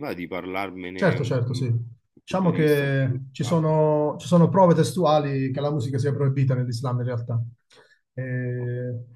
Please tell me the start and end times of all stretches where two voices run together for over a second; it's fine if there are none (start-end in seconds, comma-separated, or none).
2.2-3.6